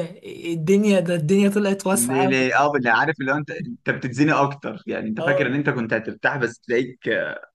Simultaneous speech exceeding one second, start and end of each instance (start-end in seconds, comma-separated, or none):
none